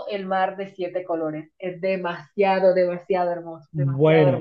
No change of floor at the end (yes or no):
no